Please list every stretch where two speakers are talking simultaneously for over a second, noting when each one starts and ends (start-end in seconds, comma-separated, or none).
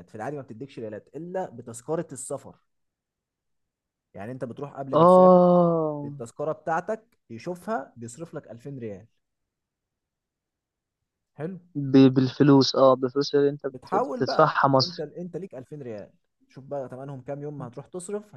13.7-15.1